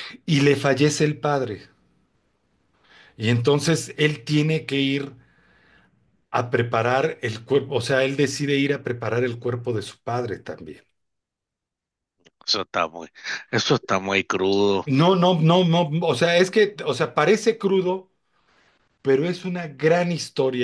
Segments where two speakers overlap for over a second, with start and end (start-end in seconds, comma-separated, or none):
none